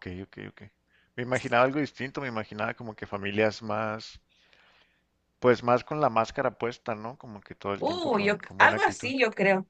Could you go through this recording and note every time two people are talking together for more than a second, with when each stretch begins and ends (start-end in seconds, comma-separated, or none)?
7.8-9.1